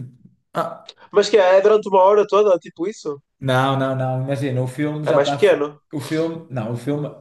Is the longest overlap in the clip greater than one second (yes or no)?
no